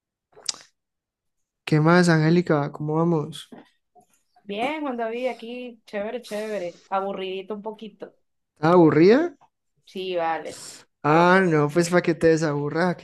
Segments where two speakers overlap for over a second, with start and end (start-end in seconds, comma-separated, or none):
none